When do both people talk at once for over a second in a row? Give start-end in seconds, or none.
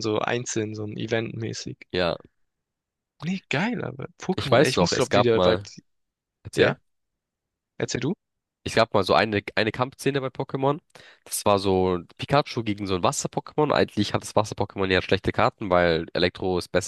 4.4-5.6